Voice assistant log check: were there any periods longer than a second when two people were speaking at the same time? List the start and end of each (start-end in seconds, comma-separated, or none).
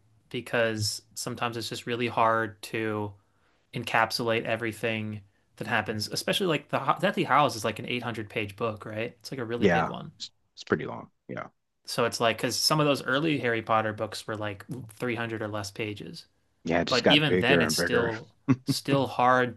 16.9-18.1